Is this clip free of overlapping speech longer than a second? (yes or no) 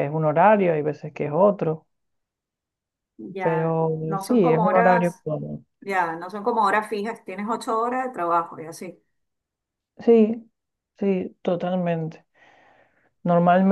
no